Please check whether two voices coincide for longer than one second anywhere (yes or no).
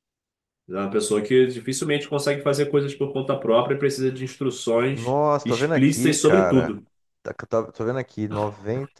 yes